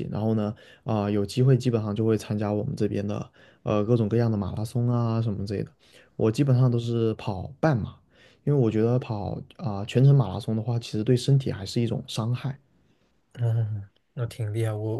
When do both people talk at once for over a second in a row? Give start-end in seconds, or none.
none